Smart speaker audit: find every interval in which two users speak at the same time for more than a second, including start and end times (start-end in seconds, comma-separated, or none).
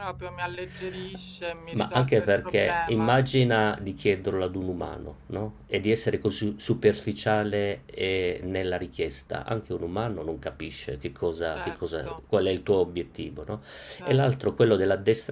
1.7-3.1